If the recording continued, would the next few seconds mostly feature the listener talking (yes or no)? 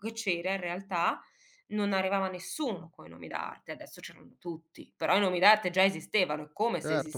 yes